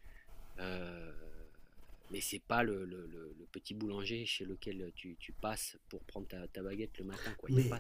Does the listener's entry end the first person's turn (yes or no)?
yes